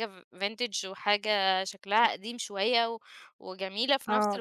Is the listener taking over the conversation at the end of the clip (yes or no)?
yes